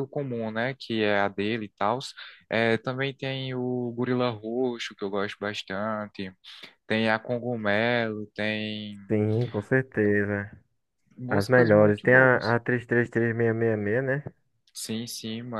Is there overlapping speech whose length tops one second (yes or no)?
yes